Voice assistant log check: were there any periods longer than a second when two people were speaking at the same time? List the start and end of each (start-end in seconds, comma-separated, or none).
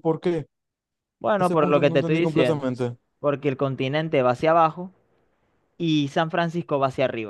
1.4-2.7